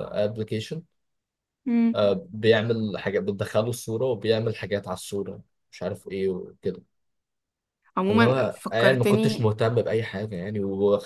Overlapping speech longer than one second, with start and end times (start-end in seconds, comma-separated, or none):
8.1-9.5